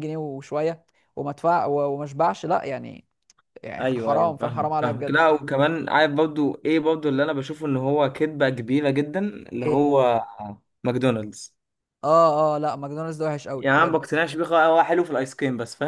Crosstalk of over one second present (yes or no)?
yes